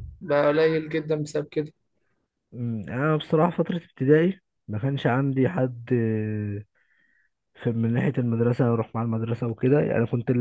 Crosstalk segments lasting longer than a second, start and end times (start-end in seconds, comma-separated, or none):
none